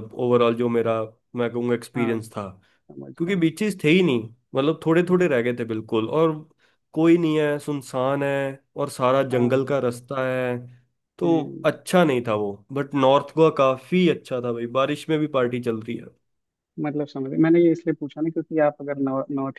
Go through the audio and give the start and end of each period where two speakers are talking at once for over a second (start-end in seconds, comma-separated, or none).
none